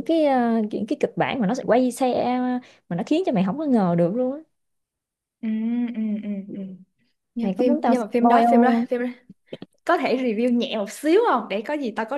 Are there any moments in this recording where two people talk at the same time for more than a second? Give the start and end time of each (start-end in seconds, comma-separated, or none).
7.4-8.8